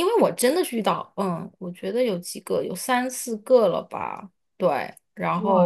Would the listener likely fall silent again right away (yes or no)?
no